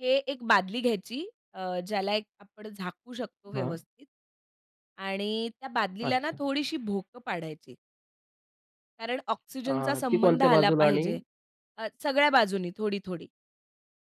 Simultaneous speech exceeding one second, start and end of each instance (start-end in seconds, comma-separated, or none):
9.7-11.0